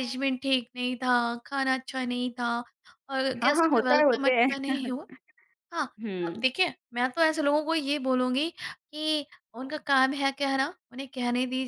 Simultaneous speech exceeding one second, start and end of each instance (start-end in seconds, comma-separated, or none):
3.4-4.7